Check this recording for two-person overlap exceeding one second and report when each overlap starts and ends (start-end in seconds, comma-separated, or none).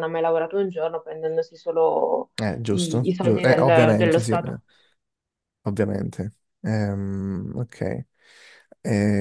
2.7-4.6